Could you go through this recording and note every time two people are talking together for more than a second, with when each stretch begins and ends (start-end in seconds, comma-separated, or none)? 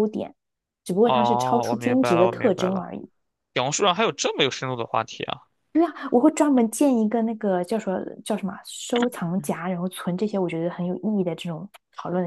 1.0-2.9